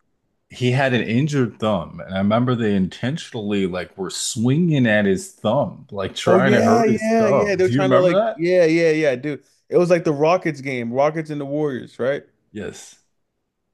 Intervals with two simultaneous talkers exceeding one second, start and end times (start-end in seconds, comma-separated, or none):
6.2-8.4